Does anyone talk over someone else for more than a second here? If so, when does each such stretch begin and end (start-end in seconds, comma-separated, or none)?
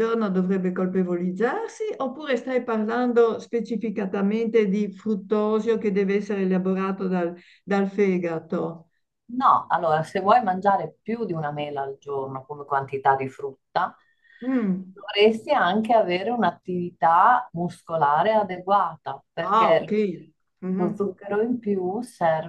none